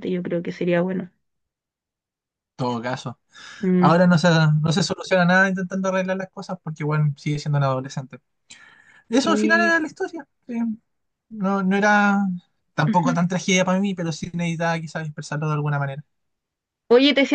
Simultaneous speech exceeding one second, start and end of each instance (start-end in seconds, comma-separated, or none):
none